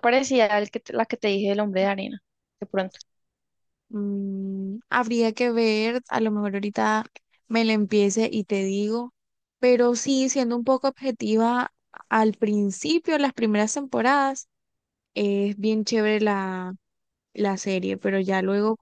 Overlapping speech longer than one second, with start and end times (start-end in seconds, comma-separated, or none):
none